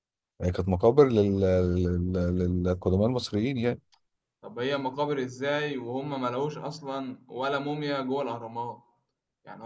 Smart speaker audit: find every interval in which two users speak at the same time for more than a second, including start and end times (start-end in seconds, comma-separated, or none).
none